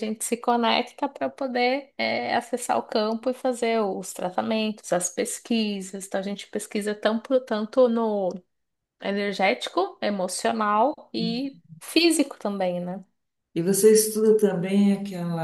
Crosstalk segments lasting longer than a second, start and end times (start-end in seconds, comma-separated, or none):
none